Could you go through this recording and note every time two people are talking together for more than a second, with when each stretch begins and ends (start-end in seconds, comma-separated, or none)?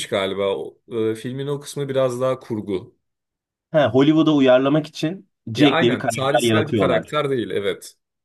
5.6-7.1